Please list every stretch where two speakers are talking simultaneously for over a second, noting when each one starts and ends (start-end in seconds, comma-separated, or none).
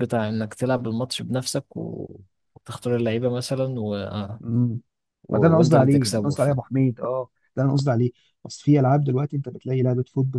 5.3-6.5